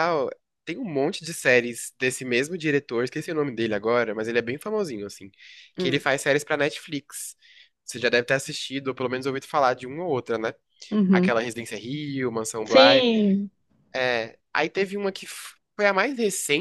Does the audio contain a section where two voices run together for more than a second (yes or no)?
no